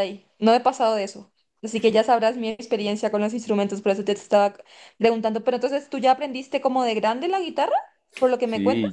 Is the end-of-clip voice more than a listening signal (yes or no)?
yes